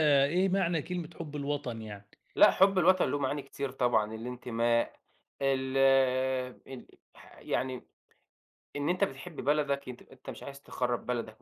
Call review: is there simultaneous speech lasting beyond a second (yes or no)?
no